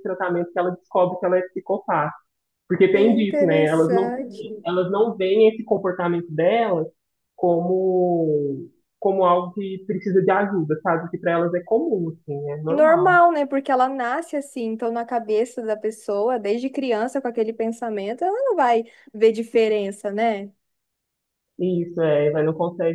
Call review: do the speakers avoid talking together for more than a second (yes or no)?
no